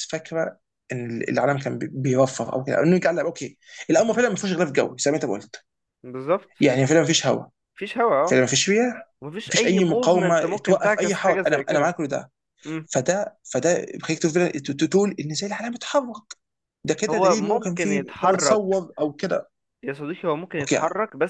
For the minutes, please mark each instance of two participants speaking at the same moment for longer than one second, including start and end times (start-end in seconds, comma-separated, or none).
9.2-11.9, 17.1-18.6